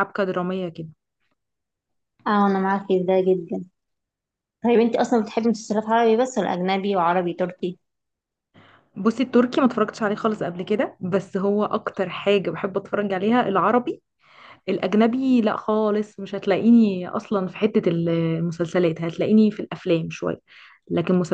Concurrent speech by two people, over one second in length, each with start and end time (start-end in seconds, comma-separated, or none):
none